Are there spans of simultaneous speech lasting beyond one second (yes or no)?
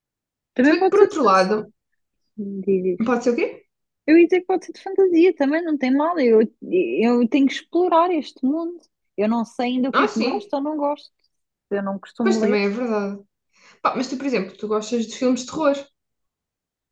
no